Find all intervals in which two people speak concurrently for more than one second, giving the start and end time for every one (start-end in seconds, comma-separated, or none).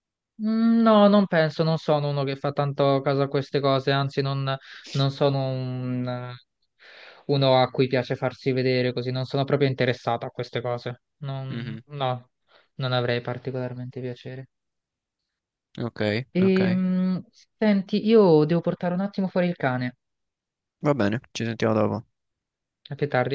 none